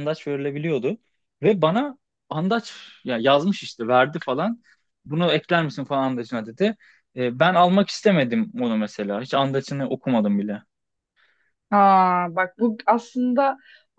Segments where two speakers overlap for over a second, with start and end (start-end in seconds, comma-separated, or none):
none